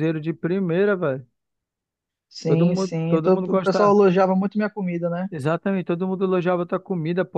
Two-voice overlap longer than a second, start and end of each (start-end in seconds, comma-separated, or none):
2.5-3.9